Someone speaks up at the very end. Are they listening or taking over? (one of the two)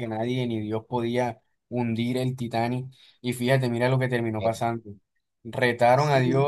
listening